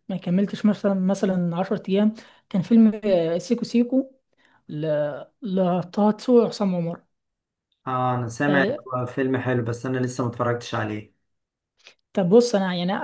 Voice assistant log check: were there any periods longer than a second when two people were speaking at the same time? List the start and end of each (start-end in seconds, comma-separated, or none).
none